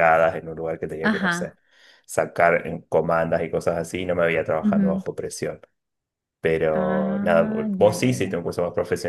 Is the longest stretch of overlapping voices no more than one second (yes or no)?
no